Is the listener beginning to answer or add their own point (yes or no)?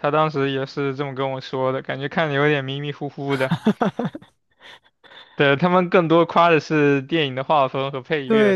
yes